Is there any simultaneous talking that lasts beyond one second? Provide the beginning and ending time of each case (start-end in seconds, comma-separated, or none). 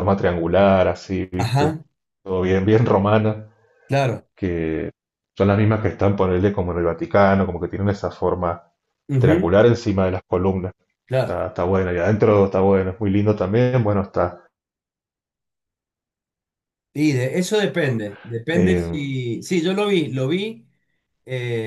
none